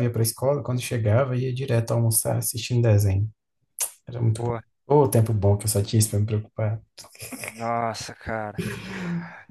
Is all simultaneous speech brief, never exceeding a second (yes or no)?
yes